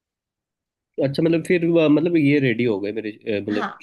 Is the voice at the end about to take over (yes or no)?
yes